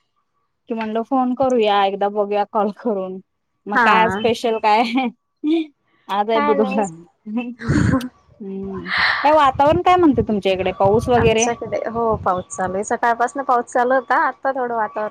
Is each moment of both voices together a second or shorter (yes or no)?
yes